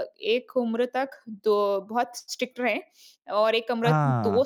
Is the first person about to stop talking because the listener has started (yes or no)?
no